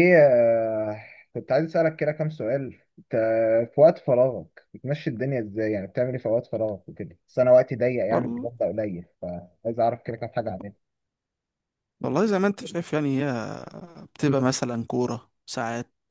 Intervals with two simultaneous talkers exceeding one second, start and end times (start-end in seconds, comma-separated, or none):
none